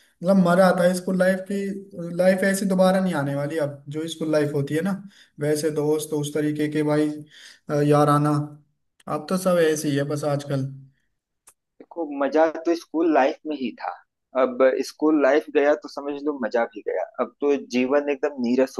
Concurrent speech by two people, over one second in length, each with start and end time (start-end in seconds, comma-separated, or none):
none